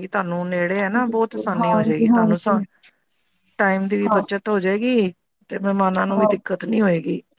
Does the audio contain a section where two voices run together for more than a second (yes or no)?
yes